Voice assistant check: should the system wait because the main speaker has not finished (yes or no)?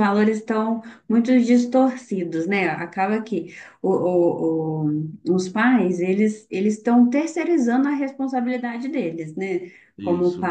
yes